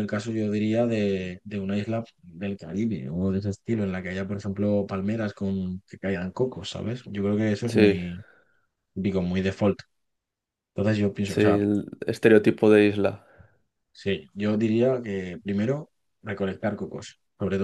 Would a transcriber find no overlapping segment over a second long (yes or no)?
yes